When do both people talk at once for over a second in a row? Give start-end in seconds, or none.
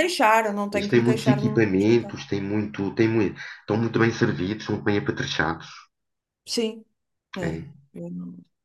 0.7-2.2